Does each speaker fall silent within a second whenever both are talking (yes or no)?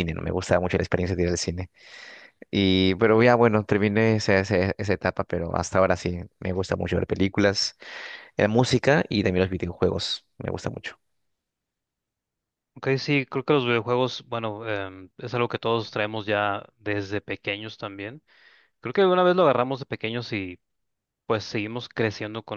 yes